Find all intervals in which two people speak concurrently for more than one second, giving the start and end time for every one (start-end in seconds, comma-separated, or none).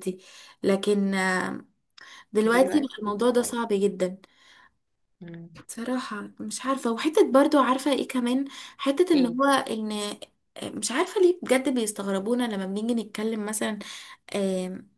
2.4-3.7